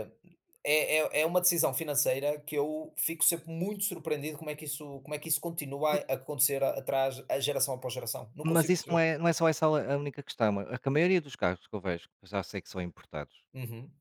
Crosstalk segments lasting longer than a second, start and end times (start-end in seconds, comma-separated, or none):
none